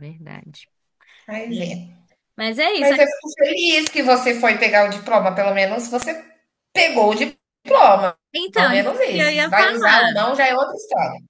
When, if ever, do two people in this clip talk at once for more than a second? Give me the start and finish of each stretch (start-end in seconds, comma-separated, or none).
8.6-10.3